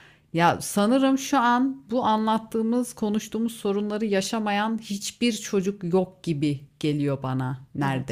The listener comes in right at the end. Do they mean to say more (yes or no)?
yes